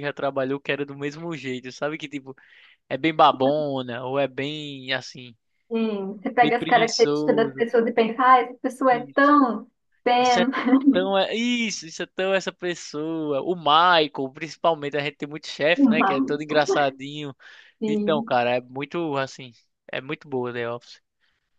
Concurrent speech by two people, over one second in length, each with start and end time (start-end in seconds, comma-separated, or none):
6.4-7.7